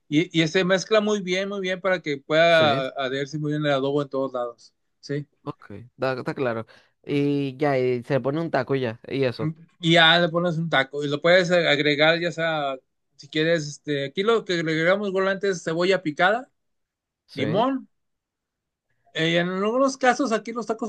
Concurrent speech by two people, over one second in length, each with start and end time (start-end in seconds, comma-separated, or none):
none